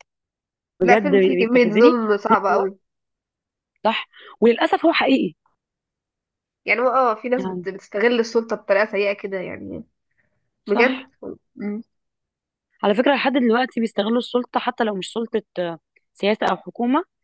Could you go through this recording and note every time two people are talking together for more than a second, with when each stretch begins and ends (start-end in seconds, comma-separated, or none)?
0.8-2.7